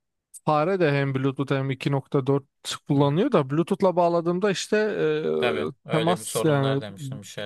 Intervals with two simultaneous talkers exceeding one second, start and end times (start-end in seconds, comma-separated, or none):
5.4-6.8